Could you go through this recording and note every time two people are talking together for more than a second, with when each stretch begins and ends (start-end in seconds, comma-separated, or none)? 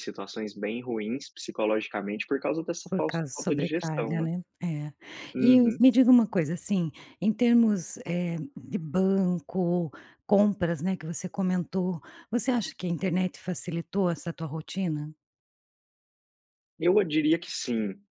2.9-4.3